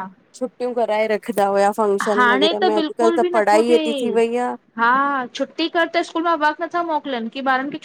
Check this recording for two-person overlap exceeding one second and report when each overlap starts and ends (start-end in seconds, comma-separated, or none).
2.1-4.2